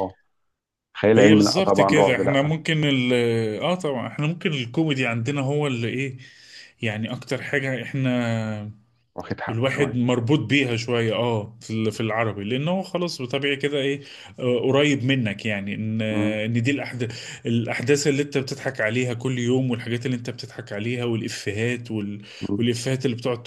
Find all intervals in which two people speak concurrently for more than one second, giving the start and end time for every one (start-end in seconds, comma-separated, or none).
1.1-2.5